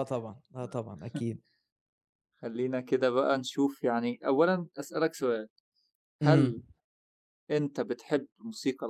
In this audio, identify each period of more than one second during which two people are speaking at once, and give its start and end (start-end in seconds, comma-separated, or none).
none